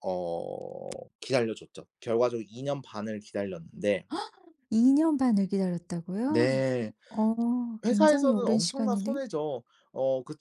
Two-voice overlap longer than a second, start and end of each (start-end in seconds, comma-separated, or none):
7.8-9.2